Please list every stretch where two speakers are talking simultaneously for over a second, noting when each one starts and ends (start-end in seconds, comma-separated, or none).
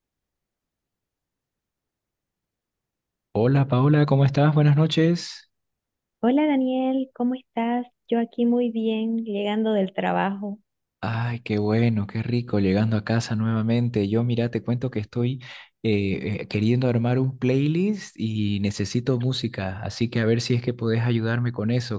none